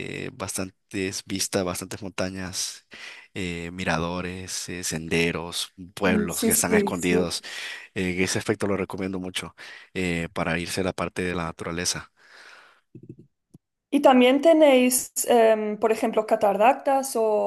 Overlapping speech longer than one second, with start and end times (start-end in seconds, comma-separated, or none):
6.0-7.4